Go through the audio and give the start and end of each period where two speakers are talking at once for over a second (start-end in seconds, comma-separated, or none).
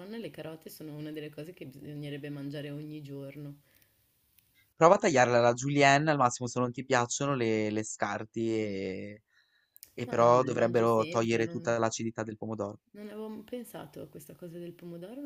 10.1-11.6